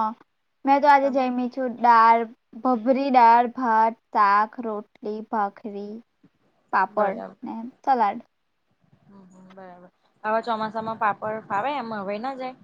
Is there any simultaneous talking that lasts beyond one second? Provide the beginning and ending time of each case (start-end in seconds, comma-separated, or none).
none